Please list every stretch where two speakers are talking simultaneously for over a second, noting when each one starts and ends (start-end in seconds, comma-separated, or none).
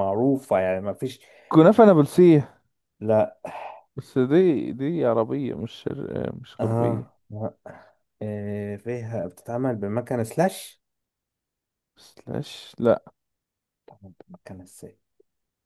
none